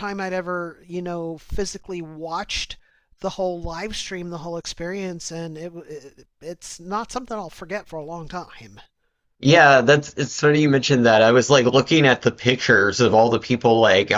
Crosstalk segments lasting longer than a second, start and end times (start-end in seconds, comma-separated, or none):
none